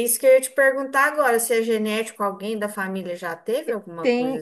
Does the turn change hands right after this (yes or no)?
yes